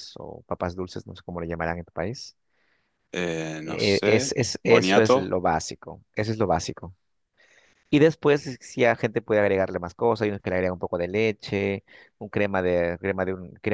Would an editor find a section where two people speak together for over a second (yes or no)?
yes